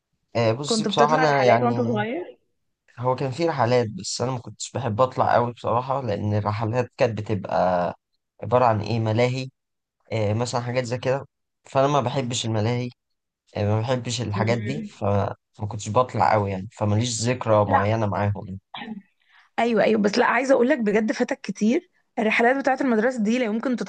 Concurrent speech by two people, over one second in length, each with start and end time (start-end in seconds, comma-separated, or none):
0.6-2.0